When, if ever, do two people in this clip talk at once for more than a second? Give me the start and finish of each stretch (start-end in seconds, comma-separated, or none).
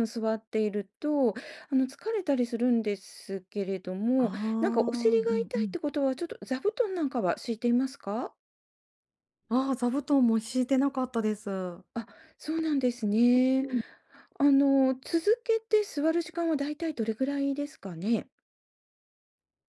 4.2-5.8